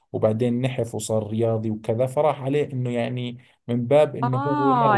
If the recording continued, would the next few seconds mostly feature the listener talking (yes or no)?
yes